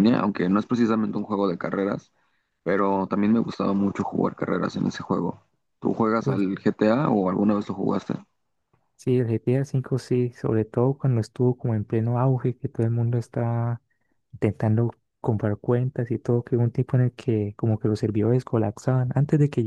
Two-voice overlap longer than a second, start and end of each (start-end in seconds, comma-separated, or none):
none